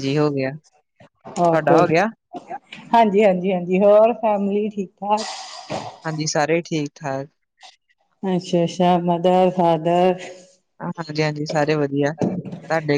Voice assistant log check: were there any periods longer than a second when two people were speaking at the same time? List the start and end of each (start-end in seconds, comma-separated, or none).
none